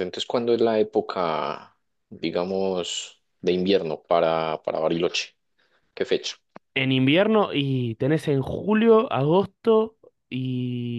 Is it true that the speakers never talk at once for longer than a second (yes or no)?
yes